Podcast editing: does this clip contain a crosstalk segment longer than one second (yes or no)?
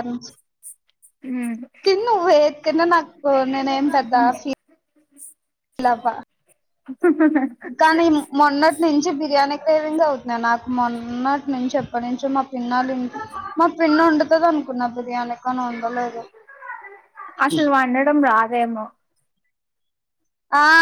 no